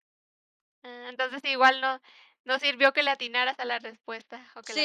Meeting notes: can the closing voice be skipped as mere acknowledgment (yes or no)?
no